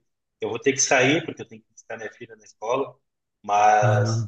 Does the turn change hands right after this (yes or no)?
no